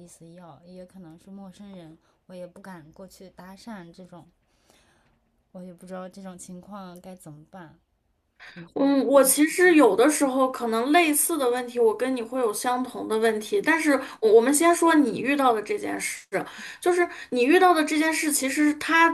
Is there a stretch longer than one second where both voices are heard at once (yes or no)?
no